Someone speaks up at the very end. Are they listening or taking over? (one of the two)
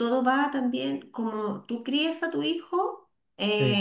listening